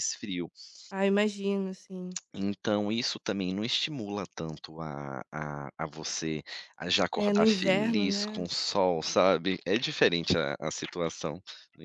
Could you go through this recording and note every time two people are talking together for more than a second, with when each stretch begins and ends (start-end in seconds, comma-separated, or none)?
7.2-8.5